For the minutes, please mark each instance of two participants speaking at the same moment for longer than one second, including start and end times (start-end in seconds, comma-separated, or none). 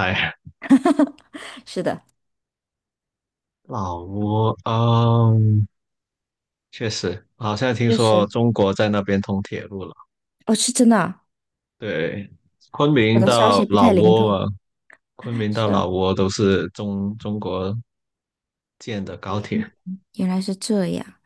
13.1-14.4